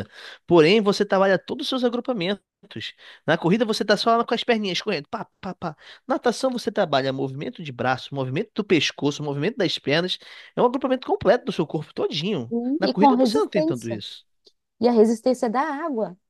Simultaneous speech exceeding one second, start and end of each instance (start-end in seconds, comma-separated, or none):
12.5-14.0